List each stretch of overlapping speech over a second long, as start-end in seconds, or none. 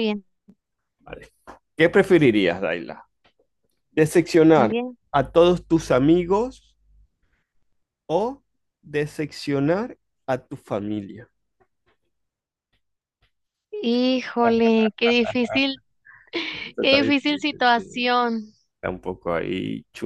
16.8-18.1